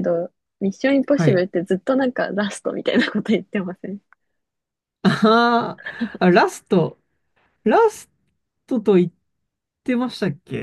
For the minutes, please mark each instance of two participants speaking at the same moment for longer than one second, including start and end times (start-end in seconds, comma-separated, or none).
none